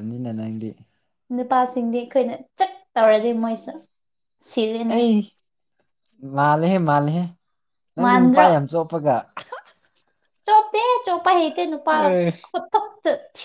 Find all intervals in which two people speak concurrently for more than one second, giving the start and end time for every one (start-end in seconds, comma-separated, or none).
none